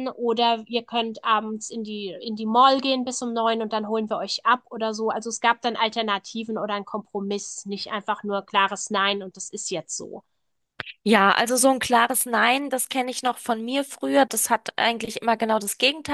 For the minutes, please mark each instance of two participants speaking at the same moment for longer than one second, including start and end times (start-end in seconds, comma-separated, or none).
none